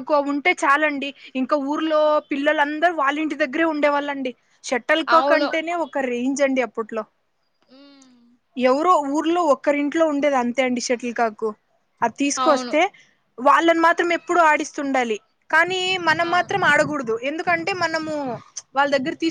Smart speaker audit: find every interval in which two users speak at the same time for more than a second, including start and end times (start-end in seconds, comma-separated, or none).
none